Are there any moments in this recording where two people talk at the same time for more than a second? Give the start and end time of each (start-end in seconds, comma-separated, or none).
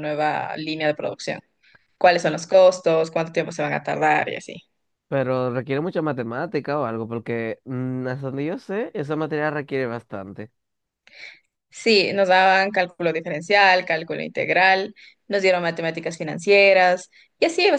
none